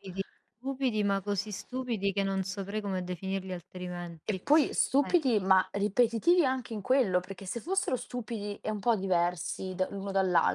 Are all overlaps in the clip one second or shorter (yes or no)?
yes